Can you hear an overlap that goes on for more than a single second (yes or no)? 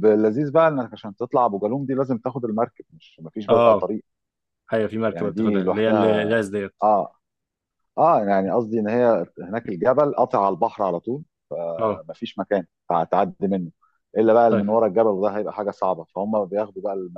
yes